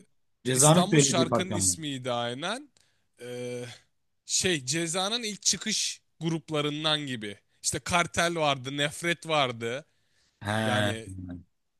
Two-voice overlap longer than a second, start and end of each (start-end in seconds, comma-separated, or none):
0.5-1.8